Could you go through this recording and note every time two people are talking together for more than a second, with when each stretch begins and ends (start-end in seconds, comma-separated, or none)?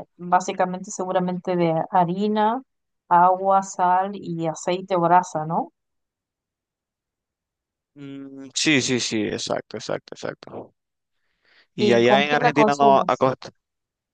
11.8-13.3